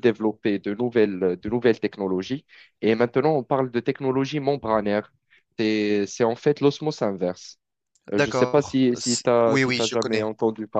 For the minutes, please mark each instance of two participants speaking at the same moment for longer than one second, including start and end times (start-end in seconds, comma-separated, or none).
8.1-10.3